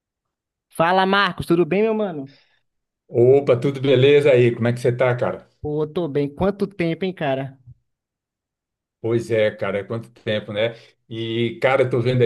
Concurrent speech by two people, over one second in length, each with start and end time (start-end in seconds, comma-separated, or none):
none